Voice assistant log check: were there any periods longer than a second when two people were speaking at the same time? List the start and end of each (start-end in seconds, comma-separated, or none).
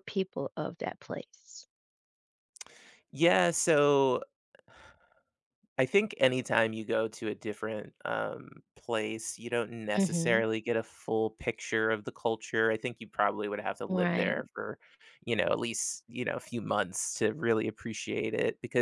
none